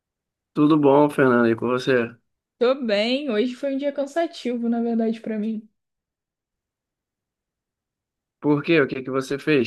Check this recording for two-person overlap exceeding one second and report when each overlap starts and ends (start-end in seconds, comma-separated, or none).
none